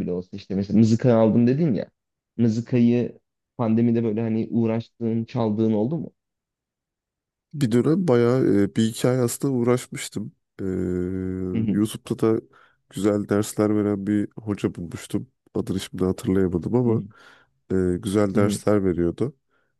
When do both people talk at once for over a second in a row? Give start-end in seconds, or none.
none